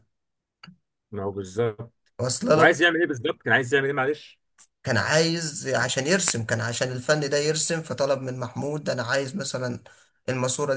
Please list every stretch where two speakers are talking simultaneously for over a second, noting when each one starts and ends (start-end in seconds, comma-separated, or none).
none